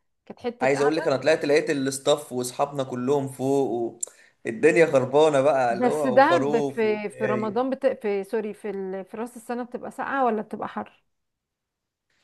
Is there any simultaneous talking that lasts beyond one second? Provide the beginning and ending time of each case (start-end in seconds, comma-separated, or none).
5.7-7.7